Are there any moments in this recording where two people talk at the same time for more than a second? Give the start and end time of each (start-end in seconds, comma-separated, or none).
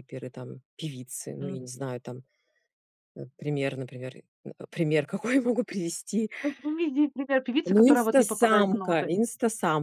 7.6-9.1